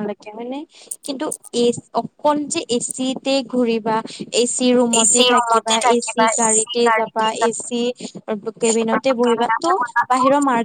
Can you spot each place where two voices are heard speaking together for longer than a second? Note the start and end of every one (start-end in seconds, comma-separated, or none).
5.0-6.7